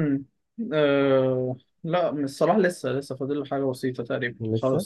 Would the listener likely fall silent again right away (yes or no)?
yes